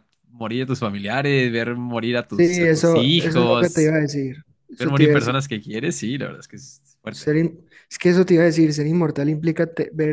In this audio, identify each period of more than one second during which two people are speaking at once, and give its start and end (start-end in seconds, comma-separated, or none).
2.3-4.0